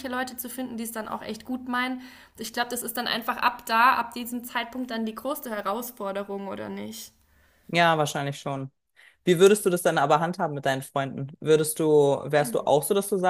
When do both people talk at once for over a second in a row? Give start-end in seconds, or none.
none